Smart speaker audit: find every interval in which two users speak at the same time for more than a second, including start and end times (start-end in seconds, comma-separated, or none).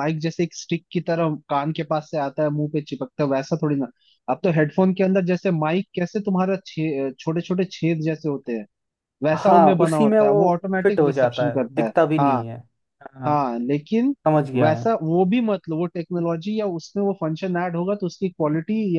9.3-12.4